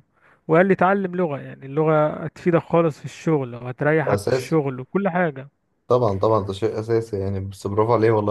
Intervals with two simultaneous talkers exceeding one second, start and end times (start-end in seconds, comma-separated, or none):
none